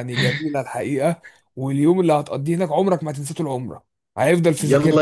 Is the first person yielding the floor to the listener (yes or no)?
yes